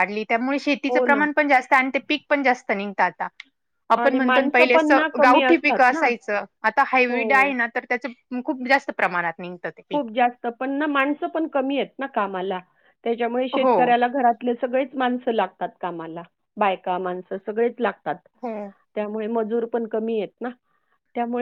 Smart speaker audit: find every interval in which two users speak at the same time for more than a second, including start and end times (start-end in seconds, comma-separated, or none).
4.0-6.0